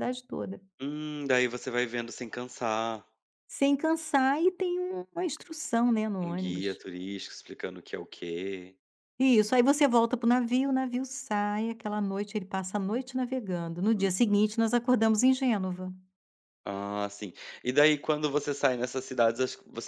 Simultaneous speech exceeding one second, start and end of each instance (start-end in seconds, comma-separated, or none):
none